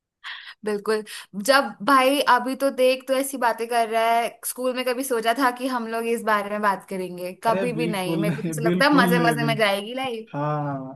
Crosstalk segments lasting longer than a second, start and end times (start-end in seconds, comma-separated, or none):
7.5-9.5